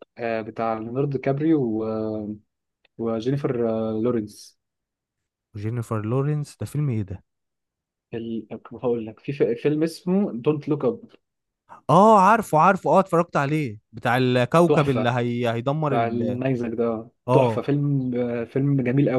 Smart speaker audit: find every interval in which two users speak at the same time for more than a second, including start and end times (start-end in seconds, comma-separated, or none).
none